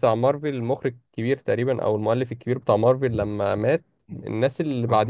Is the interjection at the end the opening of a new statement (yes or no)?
no